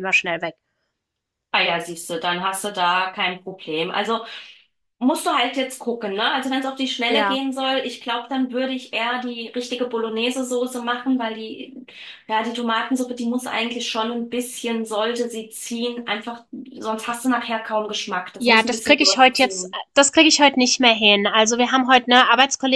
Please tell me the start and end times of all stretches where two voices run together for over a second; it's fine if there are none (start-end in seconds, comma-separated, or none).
18.4-19.8